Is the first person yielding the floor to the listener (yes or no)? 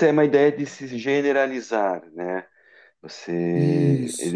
yes